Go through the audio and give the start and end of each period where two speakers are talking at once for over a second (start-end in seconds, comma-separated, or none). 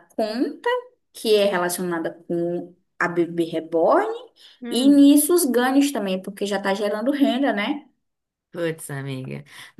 none